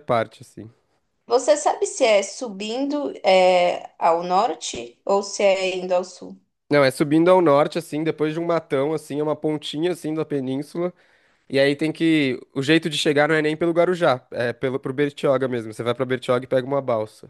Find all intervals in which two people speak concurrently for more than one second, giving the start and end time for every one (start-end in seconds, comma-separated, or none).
none